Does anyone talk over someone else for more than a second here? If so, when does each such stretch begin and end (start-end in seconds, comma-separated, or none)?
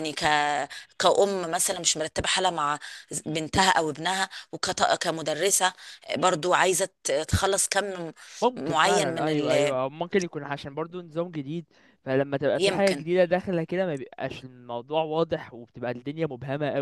8.6-9.8